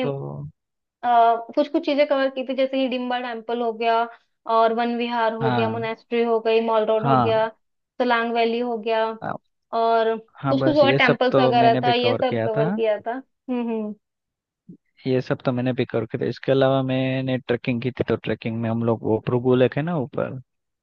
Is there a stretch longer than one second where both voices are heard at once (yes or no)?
yes